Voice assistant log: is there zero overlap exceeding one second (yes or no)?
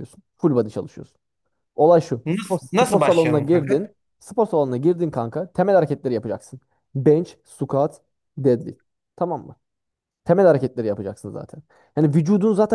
no